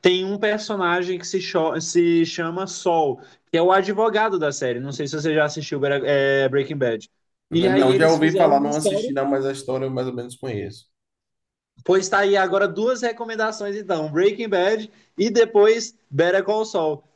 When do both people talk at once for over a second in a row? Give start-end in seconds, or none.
7.5-9.3